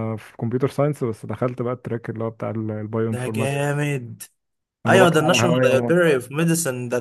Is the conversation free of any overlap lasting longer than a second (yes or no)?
no